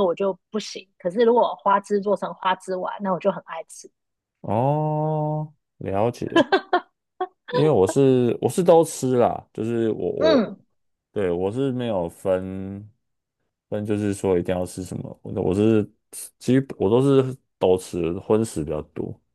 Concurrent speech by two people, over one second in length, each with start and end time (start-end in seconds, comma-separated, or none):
none